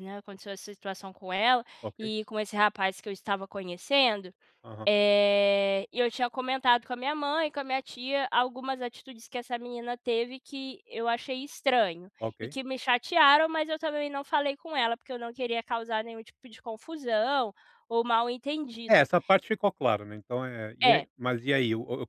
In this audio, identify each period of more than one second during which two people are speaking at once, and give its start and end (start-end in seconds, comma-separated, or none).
none